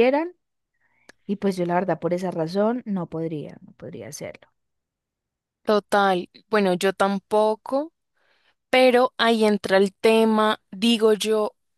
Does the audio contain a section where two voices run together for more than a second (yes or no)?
no